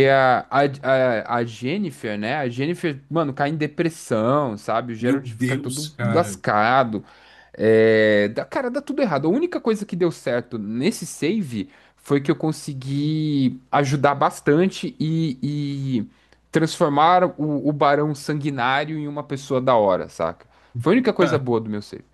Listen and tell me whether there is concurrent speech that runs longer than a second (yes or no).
yes